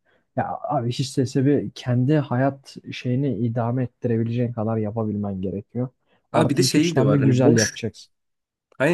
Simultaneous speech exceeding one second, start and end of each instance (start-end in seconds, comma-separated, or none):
6.3-7.8